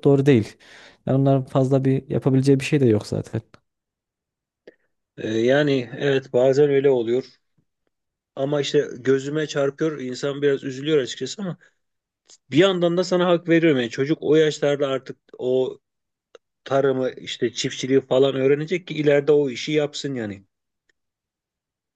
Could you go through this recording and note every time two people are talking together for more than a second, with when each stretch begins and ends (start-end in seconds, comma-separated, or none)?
none